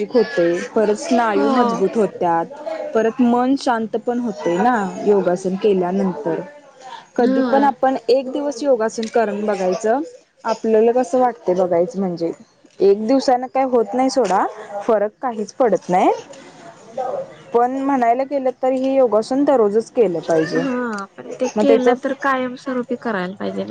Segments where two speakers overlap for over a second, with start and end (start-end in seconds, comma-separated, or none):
none